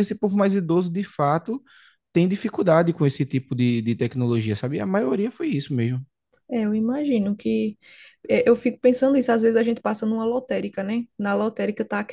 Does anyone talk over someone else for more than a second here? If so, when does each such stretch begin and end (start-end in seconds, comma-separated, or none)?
none